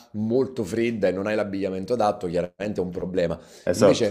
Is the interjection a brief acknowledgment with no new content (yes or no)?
yes